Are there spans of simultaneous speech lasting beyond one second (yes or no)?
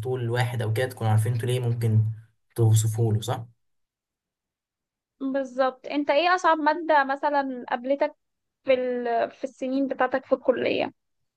no